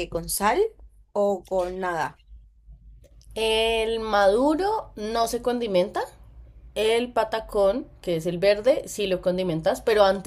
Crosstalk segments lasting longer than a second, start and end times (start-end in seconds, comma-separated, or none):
none